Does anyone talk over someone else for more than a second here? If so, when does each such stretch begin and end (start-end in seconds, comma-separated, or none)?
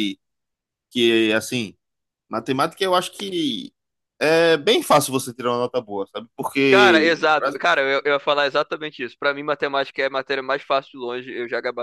none